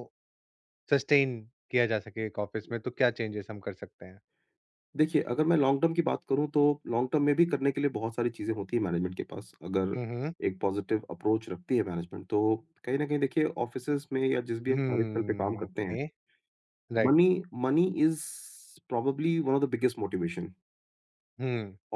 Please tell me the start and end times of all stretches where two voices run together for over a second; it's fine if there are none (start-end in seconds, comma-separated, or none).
14.7-16.0